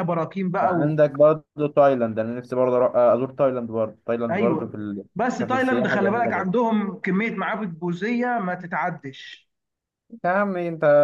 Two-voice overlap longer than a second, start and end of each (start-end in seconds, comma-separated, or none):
4.3-6.5